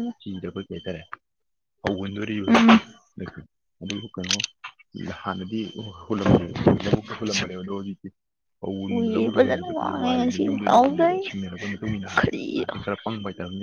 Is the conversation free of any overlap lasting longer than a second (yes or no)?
no